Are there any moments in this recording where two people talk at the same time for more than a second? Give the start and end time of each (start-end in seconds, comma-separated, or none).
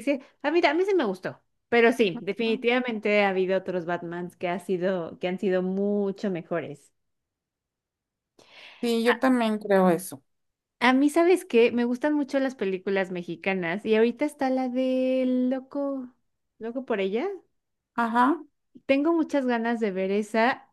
none